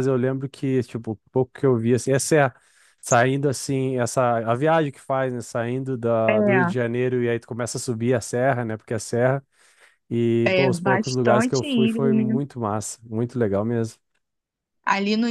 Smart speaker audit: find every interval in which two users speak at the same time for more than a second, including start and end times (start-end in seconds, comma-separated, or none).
10.4-12.4